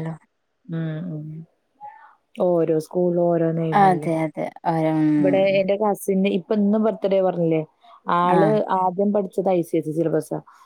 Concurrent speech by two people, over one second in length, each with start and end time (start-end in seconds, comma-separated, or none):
none